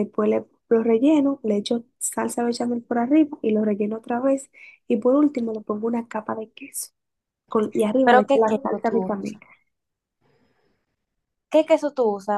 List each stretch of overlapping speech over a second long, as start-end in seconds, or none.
8.0-9.4